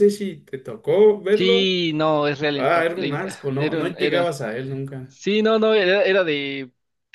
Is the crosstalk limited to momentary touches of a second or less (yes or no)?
no